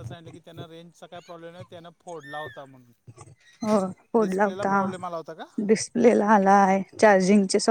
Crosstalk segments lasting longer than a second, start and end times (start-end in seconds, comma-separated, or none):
4.2-5.5